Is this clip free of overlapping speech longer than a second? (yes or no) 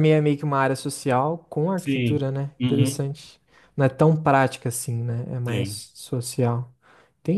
no